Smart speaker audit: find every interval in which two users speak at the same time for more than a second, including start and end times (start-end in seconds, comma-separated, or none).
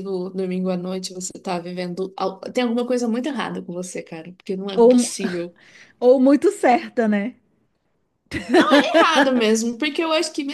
none